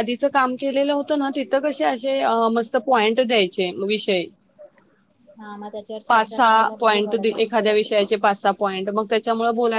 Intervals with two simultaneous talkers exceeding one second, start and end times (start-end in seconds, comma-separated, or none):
6.1-7.6